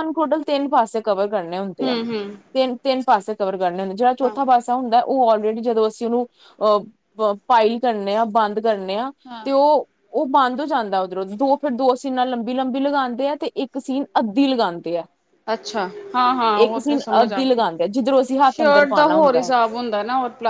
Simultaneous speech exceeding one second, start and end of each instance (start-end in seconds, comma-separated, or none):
16.6-19.5